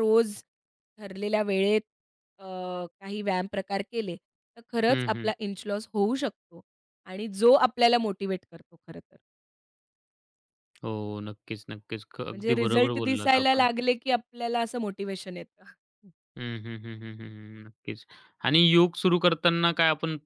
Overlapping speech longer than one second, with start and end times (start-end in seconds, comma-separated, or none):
12.3-13.7